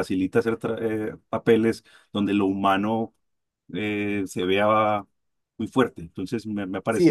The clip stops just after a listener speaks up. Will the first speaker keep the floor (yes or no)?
no